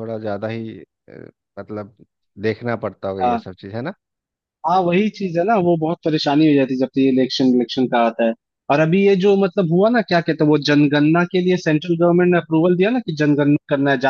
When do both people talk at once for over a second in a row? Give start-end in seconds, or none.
none